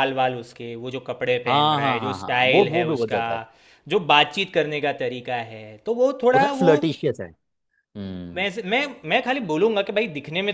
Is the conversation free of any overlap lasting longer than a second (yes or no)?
no